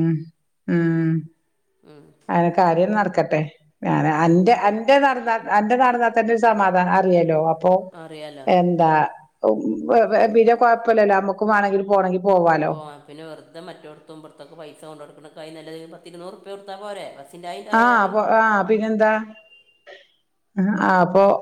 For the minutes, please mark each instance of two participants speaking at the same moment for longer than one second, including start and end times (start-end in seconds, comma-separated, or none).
none